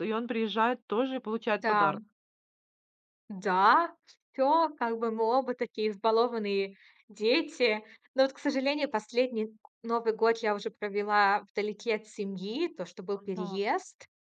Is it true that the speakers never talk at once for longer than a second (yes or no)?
yes